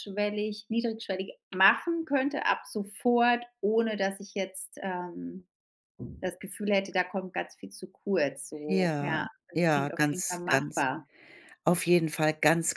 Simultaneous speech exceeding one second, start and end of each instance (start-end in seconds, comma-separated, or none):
8.7-10.9